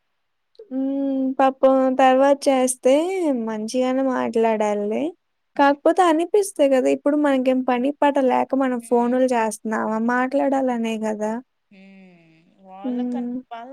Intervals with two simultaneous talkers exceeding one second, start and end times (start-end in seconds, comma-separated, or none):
none